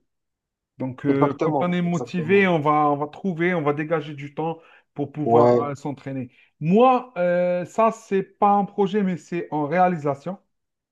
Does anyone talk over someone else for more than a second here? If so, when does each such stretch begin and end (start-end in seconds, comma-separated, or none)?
1.1-2.5